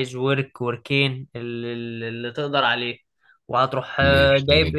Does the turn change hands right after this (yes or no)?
no